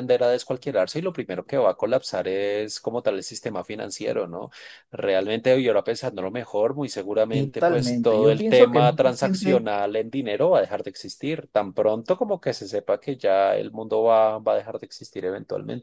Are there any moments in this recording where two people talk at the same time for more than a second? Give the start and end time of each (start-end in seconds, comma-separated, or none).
7.3-9.6